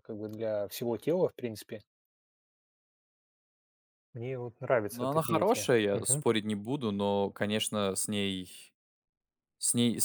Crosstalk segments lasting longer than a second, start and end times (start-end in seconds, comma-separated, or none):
4.9-6.3